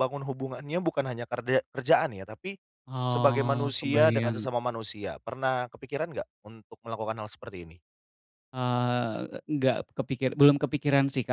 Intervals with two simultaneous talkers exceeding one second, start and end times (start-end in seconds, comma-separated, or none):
3.1-4.5